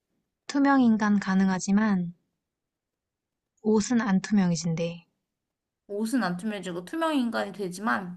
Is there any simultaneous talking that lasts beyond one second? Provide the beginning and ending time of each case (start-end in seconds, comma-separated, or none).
none